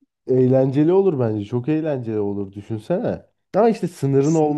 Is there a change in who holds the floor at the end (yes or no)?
no